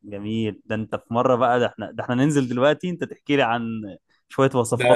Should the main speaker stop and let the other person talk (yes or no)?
yes